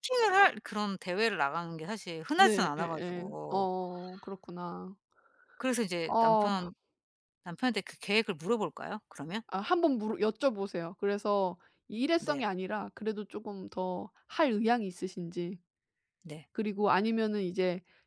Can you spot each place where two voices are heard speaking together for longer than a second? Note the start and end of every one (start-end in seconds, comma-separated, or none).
2.4-3.7